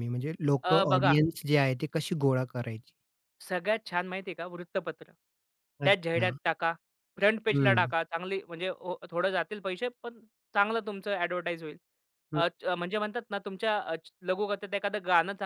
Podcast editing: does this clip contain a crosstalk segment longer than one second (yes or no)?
no